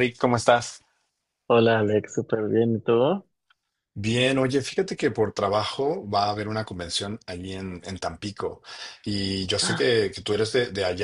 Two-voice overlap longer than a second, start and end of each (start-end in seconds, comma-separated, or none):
none